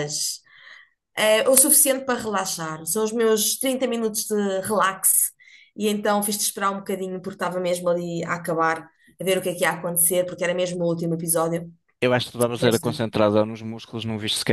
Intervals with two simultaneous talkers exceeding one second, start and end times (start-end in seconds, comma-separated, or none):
none